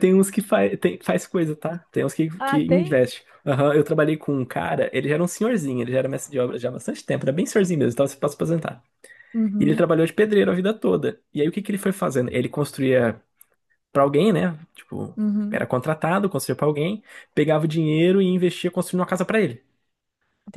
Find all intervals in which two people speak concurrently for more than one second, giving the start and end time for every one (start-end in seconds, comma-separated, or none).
none